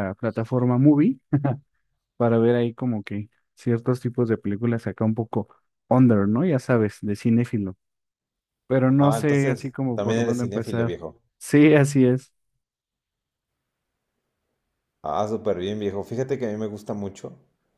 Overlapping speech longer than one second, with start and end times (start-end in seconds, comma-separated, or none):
9.0-11.0